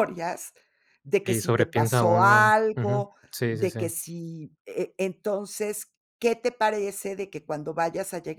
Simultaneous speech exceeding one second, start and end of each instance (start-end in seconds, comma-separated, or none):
1.2-3.8